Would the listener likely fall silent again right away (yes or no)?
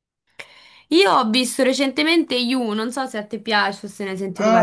no